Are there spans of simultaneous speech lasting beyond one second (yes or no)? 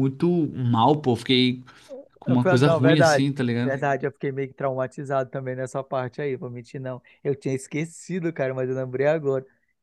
yes